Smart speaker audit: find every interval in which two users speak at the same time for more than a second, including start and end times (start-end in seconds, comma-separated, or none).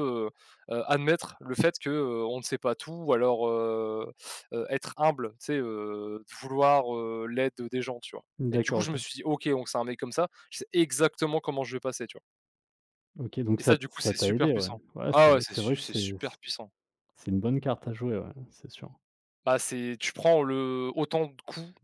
13.6-16.1